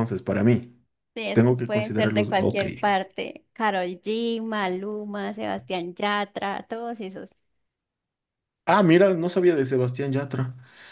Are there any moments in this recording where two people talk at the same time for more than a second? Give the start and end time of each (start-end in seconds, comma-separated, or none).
1.3-2.6